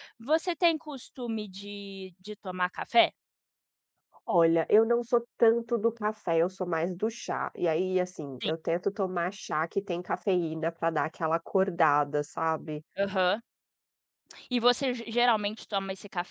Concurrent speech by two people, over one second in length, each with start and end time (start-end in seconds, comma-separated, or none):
none